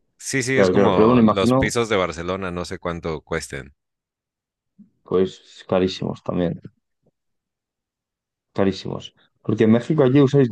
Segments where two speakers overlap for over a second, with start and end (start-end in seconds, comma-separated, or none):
0.5-1.7